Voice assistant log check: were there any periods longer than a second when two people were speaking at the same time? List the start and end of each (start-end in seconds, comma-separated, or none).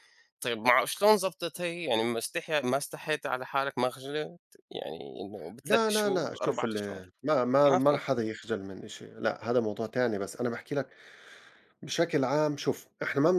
5.6-7.0